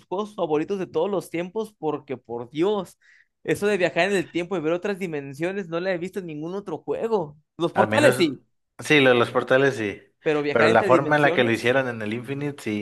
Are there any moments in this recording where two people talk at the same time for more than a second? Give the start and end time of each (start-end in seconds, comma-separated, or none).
10.5-11.8